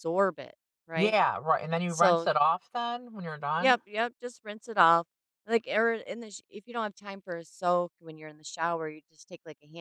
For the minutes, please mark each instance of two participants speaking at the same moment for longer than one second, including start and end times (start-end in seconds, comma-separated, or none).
none